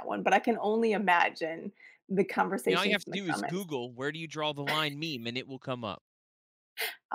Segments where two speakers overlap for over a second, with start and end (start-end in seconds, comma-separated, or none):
2.4-3.6